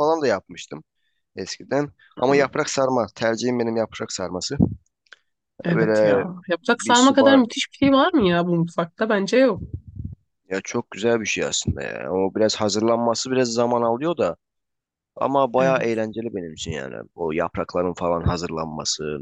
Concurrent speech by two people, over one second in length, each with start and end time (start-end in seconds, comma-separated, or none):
5.7-7.4